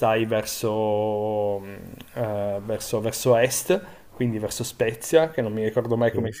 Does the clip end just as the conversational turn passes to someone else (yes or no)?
no